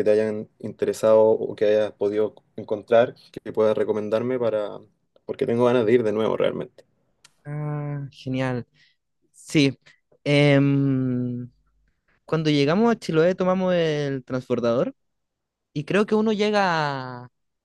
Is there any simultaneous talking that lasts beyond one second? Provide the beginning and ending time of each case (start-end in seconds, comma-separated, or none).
none